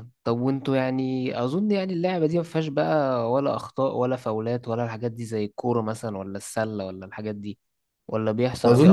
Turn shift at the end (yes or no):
yes